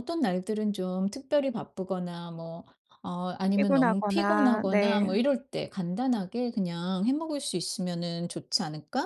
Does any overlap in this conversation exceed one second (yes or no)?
yes